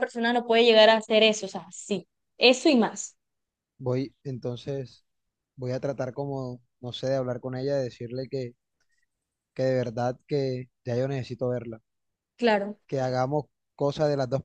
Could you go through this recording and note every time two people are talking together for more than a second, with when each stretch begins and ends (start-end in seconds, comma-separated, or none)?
none